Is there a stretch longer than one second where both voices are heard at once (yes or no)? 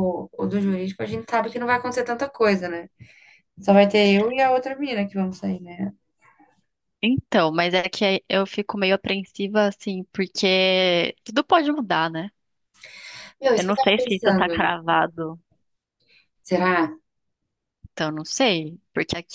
yes